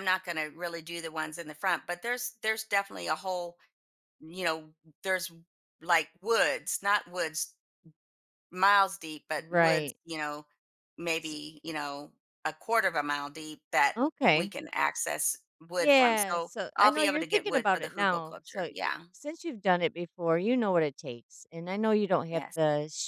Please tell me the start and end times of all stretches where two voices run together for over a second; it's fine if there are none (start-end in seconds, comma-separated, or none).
15.8-18.7